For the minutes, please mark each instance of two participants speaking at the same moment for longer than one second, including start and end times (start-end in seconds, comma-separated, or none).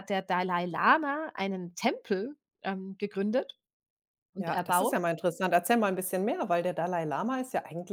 none